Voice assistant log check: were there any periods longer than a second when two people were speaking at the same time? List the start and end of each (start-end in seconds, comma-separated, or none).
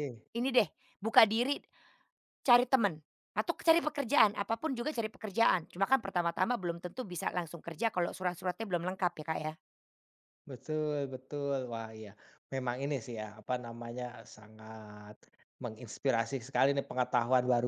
none